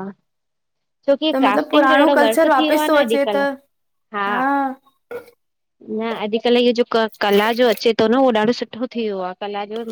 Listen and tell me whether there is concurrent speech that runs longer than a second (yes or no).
yes